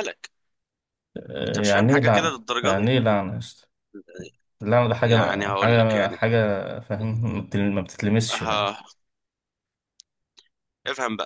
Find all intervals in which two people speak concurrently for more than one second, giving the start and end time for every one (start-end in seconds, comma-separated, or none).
1.4-2.9, 5.0-6.2